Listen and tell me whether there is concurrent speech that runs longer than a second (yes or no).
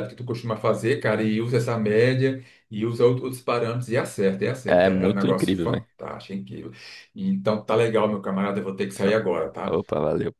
yes